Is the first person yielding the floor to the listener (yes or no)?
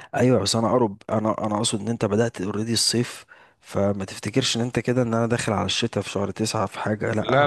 yes